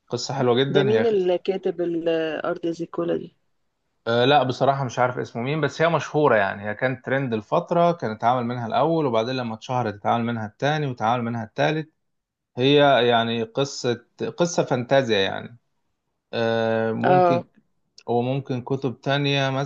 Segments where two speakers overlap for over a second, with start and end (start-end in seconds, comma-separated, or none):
none